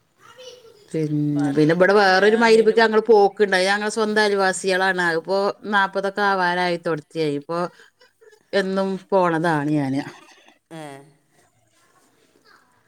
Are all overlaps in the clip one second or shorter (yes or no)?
no